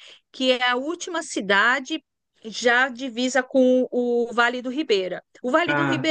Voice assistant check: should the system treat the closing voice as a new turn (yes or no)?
no